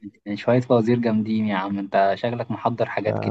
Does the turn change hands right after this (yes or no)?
yes